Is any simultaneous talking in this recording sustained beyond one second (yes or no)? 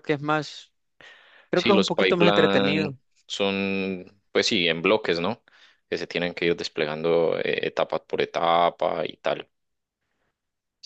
yes